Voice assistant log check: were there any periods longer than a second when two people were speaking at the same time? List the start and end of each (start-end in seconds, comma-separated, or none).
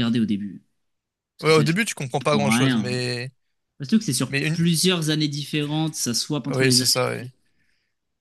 1.4-3.0